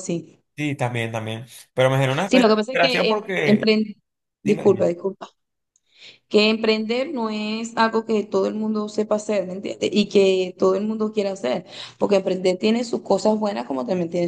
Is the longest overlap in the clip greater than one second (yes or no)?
yes